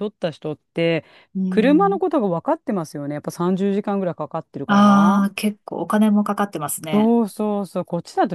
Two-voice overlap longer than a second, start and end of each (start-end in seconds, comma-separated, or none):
none